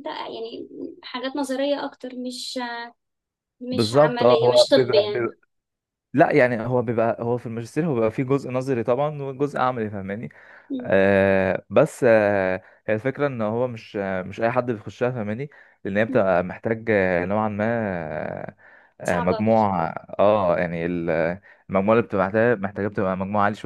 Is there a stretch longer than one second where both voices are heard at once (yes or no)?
yes